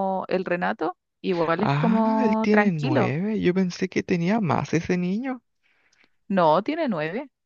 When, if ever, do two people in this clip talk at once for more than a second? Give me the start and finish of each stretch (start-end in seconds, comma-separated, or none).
1.6-3.1